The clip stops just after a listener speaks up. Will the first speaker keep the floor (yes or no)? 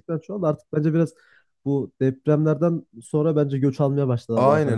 no